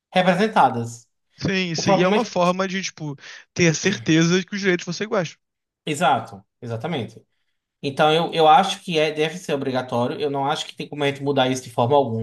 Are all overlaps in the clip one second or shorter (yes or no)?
yes